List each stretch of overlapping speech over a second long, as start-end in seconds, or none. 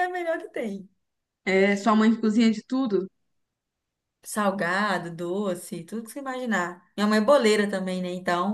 none